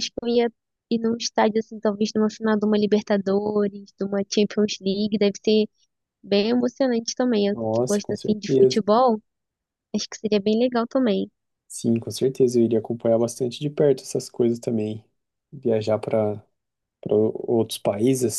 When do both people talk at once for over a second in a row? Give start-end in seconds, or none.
7.5-8.8